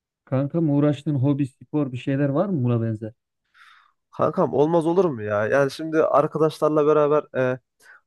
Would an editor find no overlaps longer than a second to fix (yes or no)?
yes